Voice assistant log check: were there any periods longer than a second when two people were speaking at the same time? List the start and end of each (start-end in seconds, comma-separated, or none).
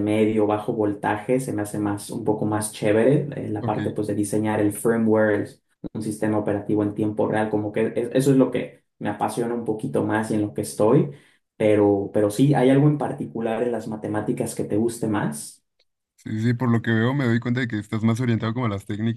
none